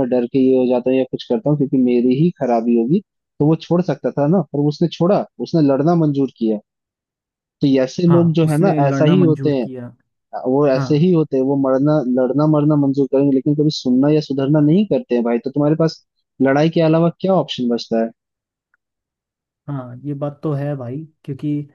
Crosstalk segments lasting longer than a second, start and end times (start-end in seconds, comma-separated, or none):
8.1-9.7